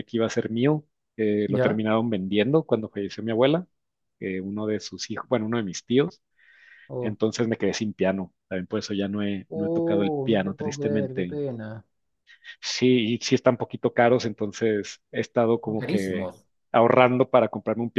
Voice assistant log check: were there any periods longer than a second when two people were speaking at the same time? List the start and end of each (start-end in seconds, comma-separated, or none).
9.5-11.4